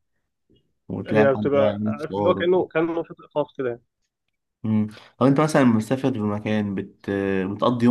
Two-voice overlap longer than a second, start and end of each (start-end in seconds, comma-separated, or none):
1.1-2.4